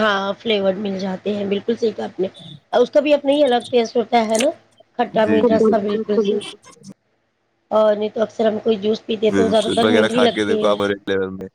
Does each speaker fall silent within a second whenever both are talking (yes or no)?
no